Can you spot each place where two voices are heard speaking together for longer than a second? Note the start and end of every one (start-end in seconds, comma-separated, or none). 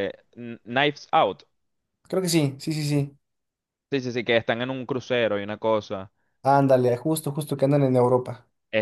none